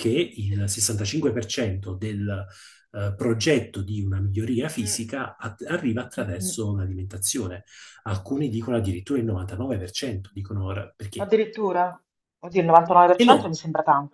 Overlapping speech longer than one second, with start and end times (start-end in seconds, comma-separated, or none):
none